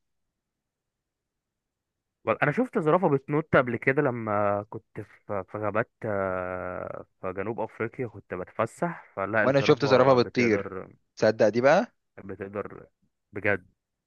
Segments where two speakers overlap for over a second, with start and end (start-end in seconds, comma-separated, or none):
9.4-10.7